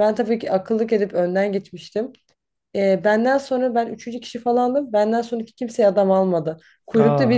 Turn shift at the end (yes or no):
no